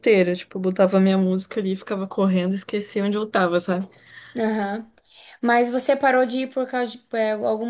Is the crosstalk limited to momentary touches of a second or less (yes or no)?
yes